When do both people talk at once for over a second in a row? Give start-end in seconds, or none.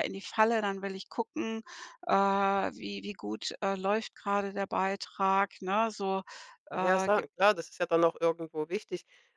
none